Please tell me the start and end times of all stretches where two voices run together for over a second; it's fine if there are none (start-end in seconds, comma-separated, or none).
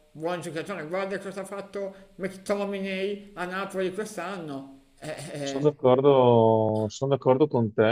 none